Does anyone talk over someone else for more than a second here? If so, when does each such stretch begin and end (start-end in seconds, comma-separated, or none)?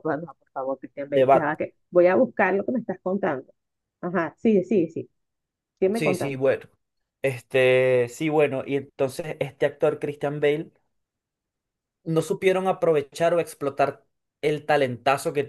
none